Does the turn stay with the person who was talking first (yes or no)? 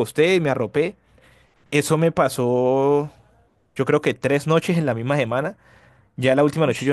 yes